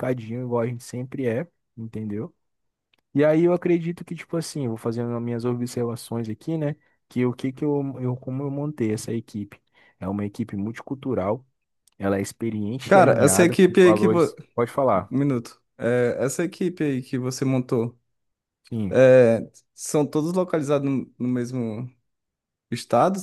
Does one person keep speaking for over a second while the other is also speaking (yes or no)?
yes